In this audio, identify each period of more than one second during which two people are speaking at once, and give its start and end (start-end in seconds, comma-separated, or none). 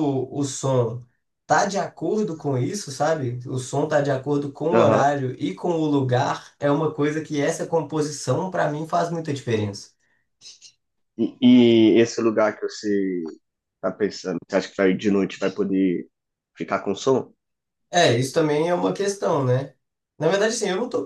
none